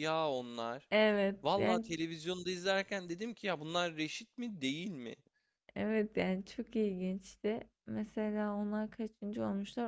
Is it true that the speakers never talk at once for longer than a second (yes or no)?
yes